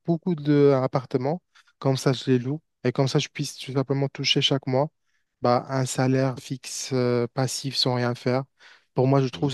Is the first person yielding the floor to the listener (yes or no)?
no